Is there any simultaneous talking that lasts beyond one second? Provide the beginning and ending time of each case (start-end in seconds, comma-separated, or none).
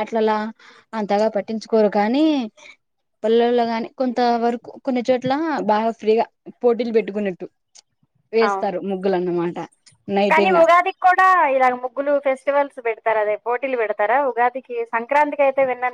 none